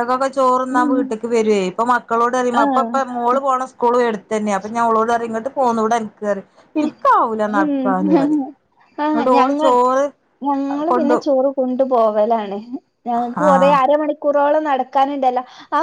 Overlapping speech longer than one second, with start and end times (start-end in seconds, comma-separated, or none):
none